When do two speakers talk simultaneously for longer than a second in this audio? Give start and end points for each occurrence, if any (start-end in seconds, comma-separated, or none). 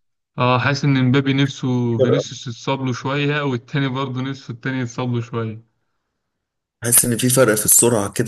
none